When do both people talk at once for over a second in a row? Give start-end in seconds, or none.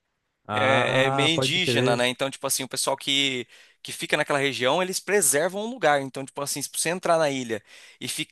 0.5-2.1